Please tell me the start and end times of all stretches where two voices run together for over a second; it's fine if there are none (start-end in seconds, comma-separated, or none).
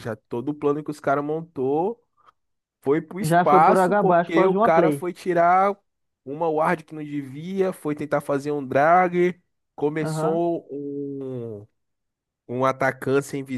3.2-5.1